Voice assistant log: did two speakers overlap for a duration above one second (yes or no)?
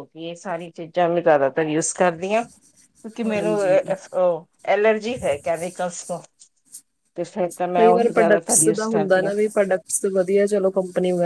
yes